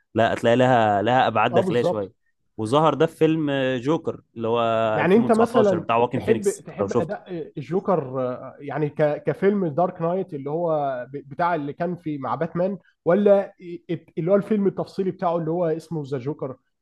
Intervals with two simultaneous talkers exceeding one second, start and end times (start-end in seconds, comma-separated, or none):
5.0-7.2